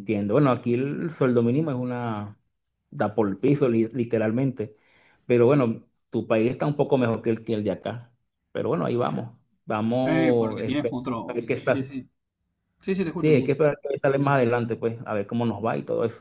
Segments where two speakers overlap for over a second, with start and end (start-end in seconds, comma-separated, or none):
10.1-11.9